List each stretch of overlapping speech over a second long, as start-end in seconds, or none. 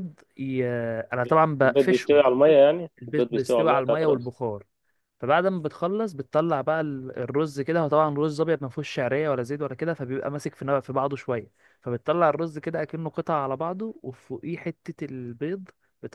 3.0-4.3